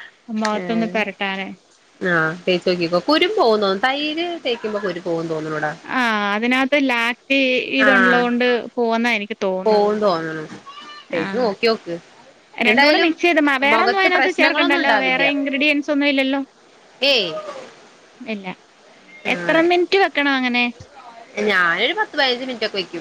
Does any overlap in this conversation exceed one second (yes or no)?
yes